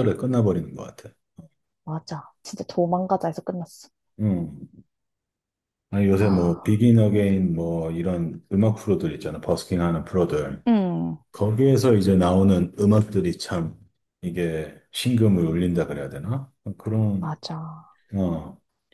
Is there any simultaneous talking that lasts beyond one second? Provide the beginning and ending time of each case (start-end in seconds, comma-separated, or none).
none